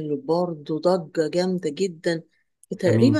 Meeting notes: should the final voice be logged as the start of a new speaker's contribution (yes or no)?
no